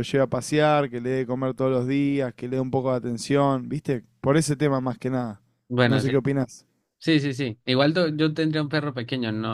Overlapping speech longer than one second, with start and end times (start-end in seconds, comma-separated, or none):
none